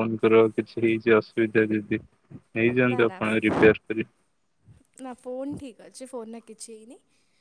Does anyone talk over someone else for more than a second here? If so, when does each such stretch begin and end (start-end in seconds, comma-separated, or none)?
none